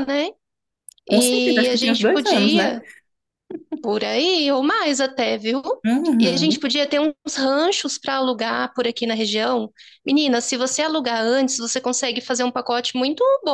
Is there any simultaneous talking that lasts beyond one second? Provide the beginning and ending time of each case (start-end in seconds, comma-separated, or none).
1.1-2.8